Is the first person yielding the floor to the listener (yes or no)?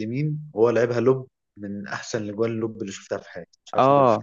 yes